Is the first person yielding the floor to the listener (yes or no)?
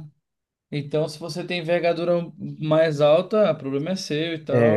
yes